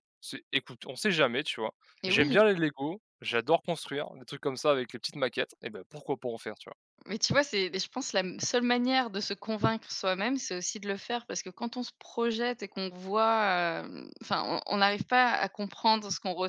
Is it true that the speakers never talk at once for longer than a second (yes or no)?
yes